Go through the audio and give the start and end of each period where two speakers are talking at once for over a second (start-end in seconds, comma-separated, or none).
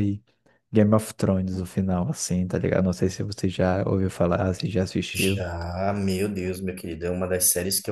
none